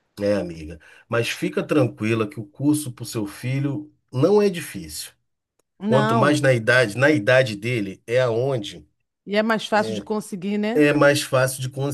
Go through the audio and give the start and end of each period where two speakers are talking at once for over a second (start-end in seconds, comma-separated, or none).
none